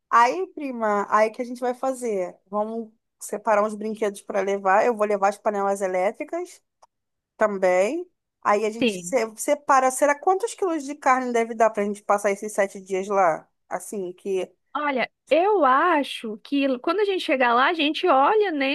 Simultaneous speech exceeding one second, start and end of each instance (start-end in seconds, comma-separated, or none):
none